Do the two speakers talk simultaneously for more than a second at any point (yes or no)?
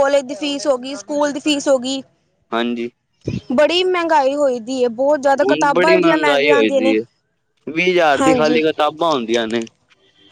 yes